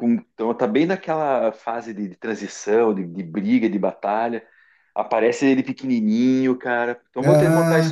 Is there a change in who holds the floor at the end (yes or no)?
yes